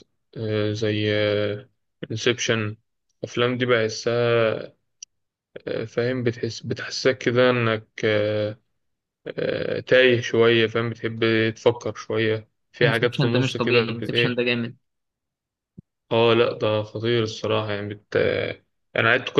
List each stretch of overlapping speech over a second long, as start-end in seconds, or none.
12.8-14.4